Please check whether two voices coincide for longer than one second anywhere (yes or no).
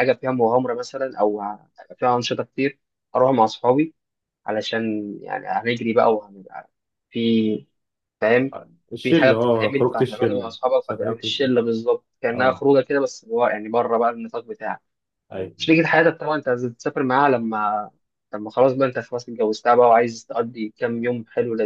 yes